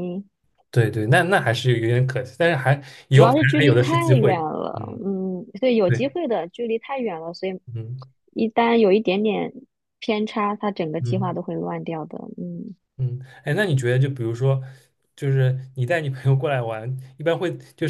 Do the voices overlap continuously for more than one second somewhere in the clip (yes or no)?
yes